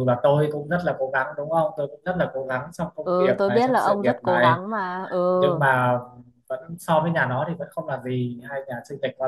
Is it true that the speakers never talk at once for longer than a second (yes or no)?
no